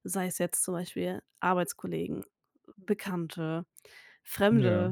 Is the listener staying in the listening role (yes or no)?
yes